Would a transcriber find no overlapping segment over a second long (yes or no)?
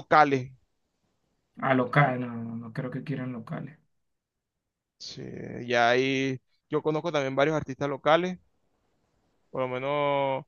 yes